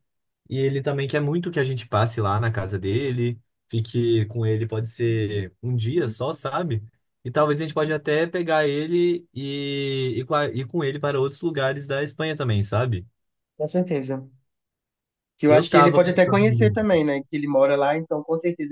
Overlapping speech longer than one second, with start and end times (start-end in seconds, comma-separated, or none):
15.5-16.8